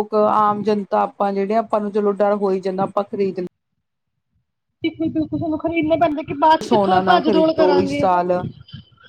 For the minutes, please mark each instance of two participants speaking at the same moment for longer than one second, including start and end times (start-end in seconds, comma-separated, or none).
6.6-8.0